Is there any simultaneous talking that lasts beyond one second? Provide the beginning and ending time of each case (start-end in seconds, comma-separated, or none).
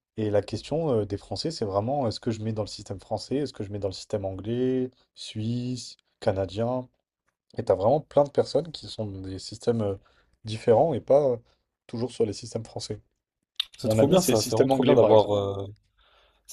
13.8-15.4